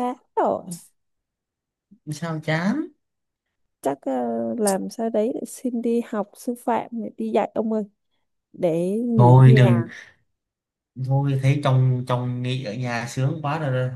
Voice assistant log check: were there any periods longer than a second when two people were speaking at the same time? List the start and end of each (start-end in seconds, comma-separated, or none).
none